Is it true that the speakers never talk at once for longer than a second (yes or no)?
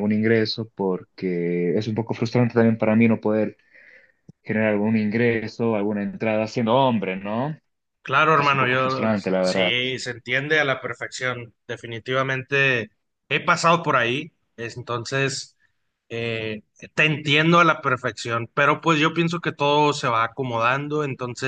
no